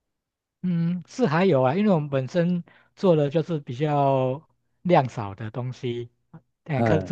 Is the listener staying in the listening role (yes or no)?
yes